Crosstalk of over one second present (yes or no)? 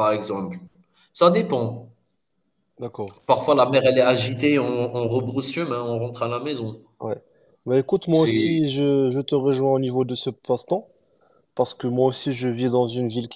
no